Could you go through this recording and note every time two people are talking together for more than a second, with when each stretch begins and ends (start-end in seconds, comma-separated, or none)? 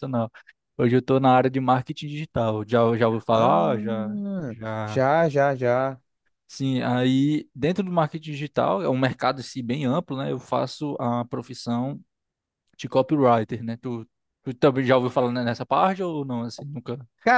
3.3-5.0